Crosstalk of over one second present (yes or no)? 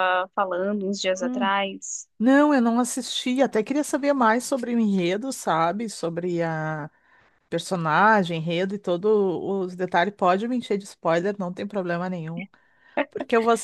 no